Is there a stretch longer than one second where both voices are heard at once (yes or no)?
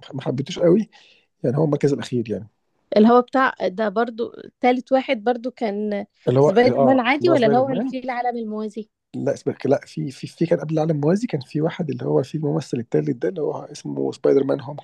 yes